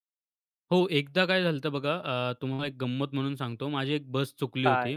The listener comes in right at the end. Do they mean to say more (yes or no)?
no